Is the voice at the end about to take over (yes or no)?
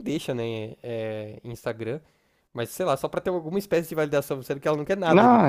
yes